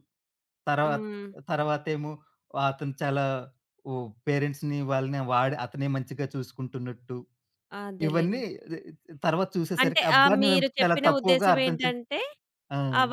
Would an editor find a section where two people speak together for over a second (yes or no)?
yes